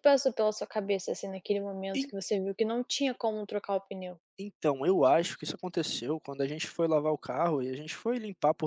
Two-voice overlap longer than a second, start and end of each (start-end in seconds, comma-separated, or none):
none